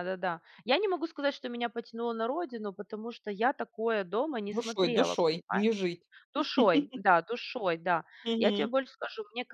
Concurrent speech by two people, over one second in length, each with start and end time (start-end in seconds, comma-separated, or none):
4.5-5.9